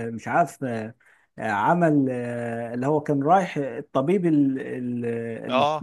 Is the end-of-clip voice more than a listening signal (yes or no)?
yes